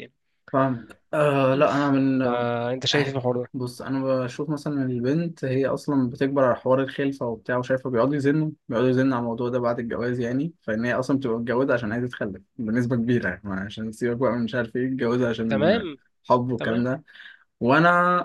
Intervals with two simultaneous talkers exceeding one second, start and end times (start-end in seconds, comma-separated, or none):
none